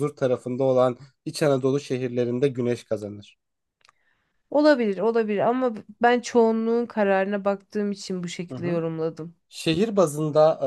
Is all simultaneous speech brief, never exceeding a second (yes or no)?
yes